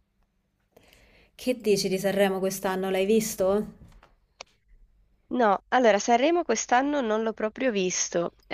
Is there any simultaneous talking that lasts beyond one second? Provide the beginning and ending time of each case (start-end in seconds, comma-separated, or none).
none